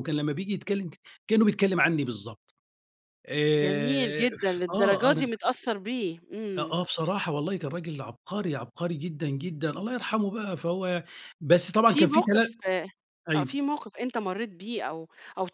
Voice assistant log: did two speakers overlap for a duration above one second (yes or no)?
yes